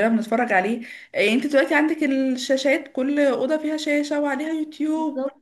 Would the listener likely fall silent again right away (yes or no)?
yes